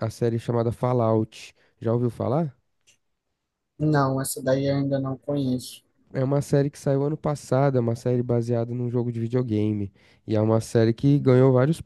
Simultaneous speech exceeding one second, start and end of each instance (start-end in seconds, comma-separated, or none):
none